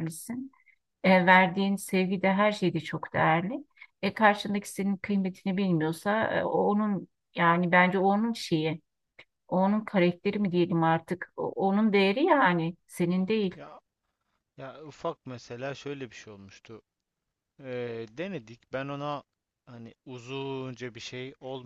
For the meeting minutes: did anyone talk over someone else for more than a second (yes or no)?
no